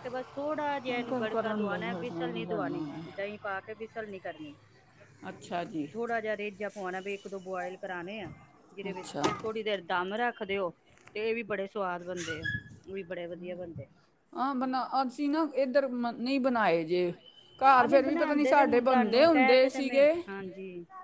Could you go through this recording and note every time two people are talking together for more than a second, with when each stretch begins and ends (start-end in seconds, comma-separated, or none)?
0.9-3.3, 17.8-20.1